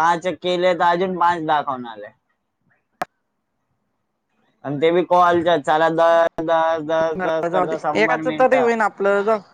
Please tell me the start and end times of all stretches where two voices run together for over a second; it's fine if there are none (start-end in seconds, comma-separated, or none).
7.1-8.7